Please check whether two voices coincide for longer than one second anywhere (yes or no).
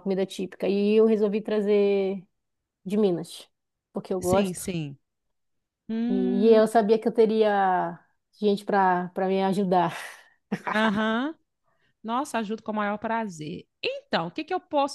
no